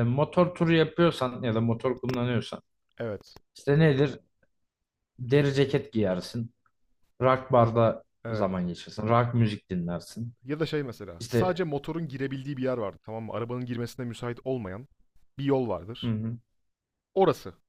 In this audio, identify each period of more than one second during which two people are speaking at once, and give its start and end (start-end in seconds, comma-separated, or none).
none